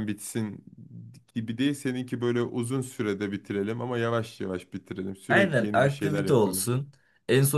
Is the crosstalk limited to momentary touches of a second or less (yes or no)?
no